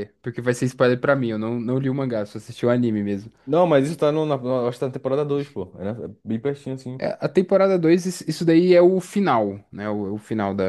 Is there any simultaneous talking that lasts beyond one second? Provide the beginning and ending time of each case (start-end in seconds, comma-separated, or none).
none